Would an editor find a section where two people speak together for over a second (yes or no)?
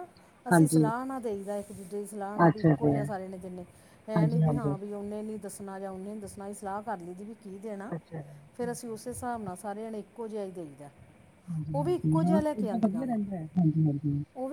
yes